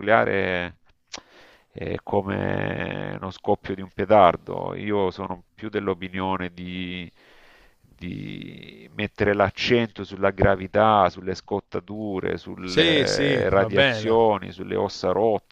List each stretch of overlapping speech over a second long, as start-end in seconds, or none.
12.6-14.2